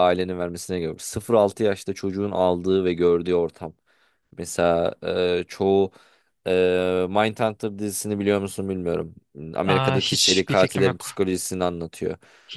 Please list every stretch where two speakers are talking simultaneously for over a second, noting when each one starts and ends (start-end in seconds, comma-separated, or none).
9.7-11.1